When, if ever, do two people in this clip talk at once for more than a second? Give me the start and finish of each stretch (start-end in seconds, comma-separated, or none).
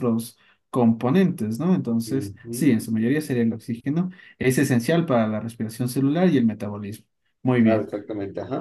none